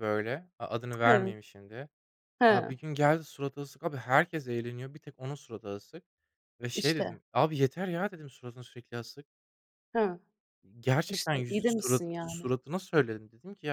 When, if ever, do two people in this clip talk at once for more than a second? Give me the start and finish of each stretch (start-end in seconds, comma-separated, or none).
11.1-12.5